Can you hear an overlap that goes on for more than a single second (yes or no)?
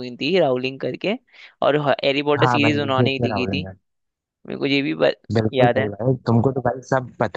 yes